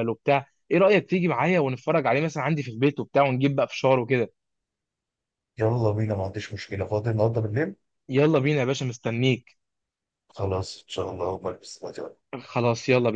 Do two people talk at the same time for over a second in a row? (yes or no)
no